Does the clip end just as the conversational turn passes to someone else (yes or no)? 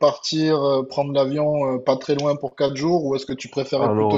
no